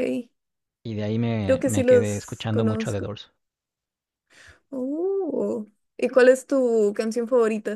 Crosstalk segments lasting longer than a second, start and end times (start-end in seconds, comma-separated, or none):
1.4-3.1